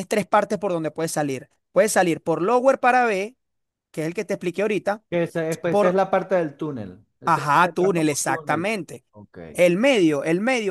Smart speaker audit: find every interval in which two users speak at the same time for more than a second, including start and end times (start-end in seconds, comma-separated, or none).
7.2-8.7